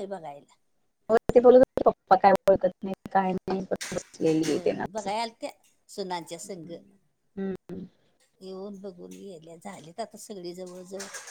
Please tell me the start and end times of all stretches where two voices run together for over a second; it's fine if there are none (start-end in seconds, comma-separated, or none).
none